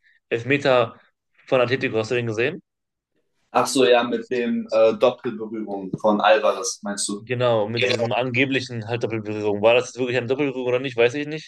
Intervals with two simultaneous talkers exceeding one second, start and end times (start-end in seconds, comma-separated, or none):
none